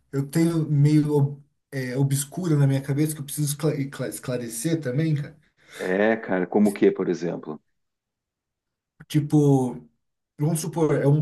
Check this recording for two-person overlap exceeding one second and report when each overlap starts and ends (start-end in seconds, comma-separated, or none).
none